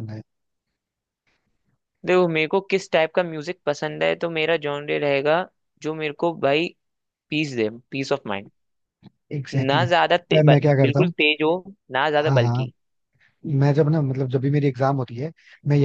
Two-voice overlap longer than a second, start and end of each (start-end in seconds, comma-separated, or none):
9.5-11.1